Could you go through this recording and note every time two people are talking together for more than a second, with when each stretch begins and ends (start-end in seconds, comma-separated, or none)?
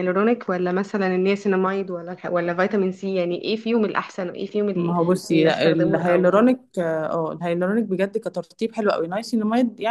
4.7-6.4